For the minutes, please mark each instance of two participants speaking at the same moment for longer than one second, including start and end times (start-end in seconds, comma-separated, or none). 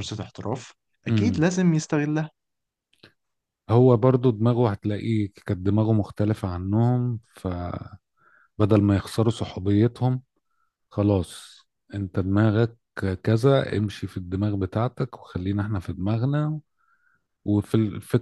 none